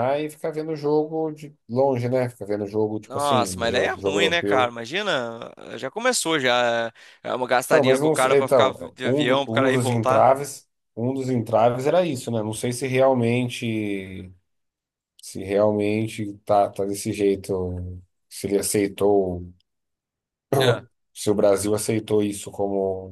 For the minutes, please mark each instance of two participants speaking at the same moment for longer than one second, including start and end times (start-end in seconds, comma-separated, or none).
3.1-4.7, 7.7-10.3